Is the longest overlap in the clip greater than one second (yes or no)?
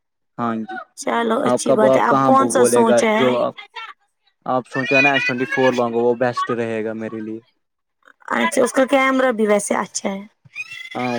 yes